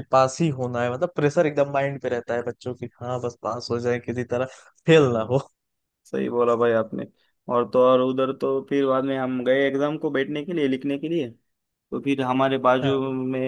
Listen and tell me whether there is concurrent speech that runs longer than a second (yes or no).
no